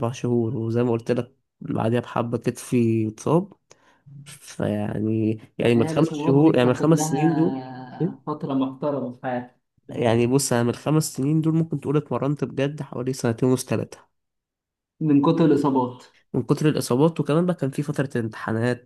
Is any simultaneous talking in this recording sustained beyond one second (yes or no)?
yes